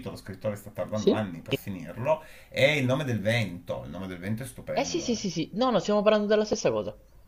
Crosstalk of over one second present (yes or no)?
no